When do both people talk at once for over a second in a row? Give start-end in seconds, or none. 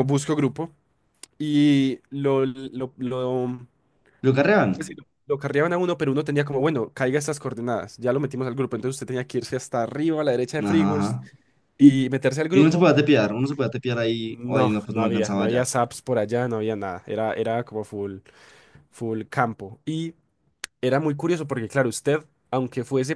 14.3-15.6